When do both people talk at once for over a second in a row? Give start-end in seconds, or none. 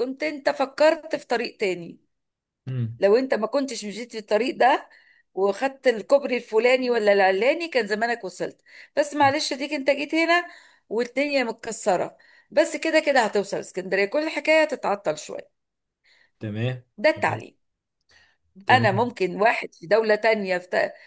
none